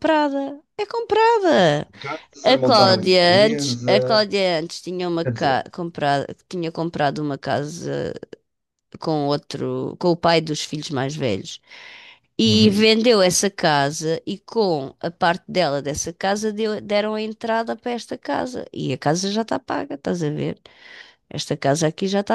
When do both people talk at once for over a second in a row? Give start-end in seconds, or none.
2.4-4.3